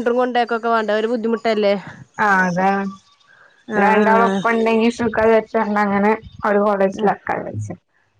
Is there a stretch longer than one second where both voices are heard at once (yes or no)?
no